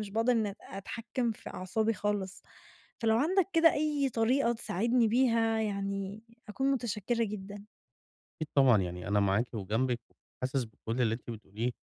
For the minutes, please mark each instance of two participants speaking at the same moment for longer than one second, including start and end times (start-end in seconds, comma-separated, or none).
none